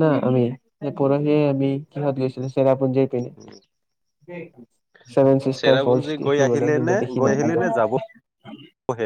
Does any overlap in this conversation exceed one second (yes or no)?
yes